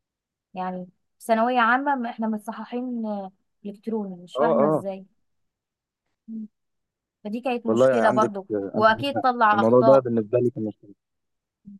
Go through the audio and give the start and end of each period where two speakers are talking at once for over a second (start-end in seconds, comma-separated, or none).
7.7-10.1